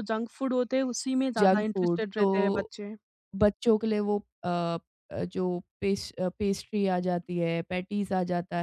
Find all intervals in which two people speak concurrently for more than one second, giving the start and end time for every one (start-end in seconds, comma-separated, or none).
1.4-2.7